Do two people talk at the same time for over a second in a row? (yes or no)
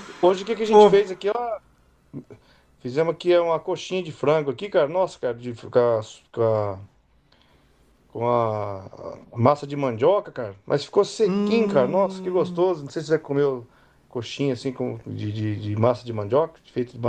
yes